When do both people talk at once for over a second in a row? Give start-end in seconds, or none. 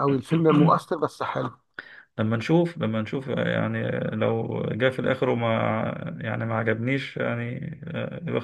none